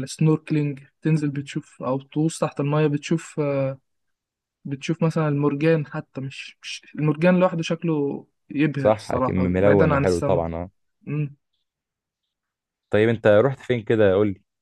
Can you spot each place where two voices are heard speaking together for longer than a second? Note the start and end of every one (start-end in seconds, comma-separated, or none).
8.8-10.4